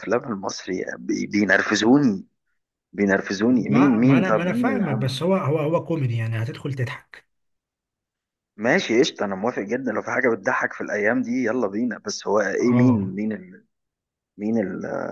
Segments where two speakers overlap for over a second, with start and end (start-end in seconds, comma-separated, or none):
3.7-5.3